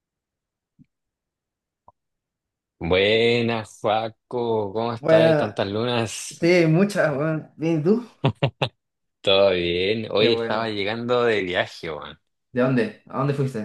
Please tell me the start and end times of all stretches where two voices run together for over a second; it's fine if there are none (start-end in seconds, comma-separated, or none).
none